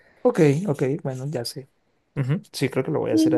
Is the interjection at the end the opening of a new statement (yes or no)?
yes